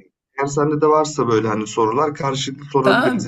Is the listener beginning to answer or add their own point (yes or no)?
yes